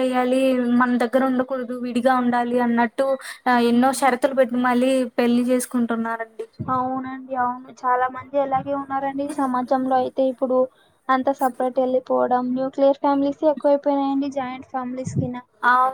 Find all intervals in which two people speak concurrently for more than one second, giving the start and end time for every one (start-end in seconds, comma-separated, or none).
none